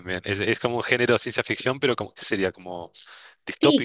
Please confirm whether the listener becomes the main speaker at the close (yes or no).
yes